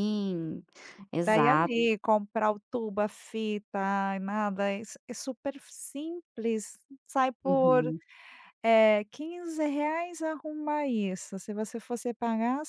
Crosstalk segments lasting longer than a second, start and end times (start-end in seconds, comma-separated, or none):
none